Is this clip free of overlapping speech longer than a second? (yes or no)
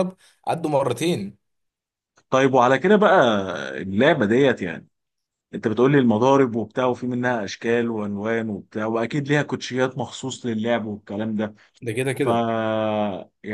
yes